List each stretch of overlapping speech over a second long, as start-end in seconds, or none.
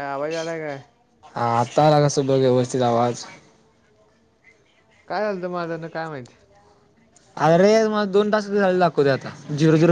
none